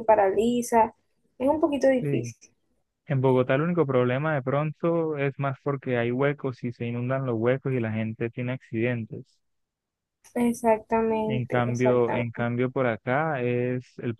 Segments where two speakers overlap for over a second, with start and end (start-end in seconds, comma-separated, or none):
11.3-12.5